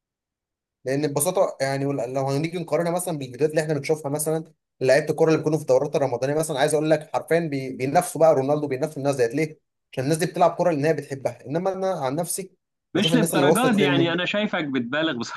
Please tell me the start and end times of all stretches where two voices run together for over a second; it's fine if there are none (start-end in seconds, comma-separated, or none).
13.0-14.2